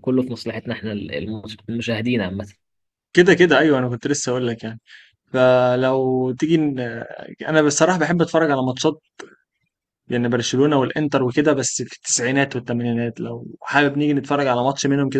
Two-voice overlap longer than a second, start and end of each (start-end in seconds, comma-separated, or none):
none